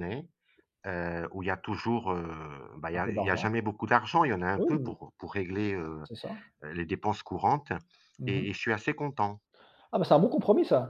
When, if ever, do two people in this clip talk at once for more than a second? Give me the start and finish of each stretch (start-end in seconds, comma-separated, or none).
none